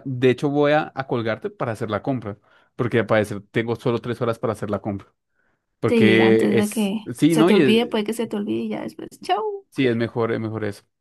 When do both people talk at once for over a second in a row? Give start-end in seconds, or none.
5.9-7.8